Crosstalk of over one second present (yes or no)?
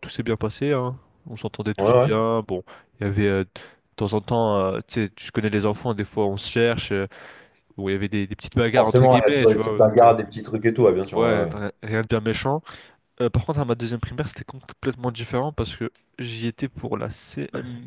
yes